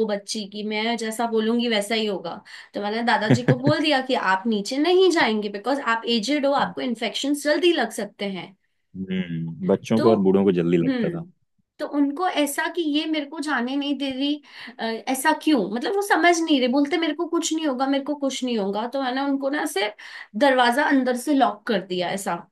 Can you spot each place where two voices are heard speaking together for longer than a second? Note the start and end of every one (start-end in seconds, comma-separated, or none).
none